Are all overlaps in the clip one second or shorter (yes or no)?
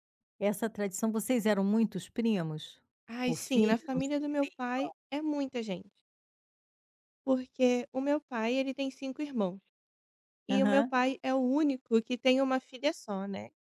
no